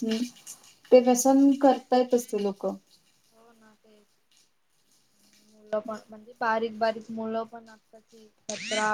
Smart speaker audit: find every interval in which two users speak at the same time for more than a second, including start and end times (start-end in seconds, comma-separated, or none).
none